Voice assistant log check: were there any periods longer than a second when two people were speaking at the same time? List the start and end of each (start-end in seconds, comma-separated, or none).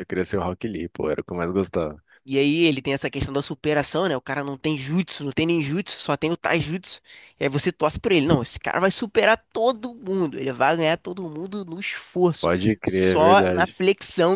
12.4-13.8